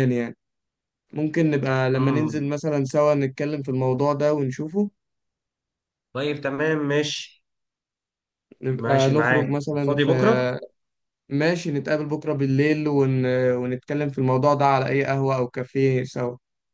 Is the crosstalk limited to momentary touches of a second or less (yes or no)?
no